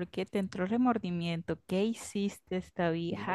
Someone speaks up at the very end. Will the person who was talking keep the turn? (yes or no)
no